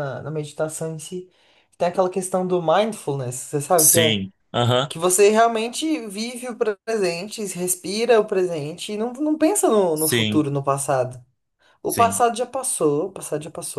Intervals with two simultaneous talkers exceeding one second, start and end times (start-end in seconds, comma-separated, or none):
none